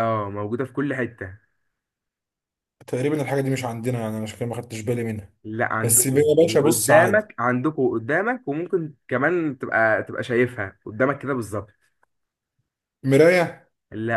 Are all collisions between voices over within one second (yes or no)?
no